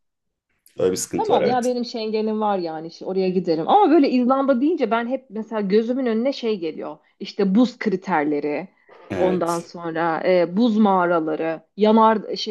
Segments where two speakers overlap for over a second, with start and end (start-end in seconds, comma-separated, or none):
none